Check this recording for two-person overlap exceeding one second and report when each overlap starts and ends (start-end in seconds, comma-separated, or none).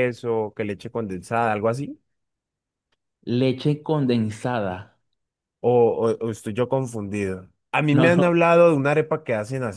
none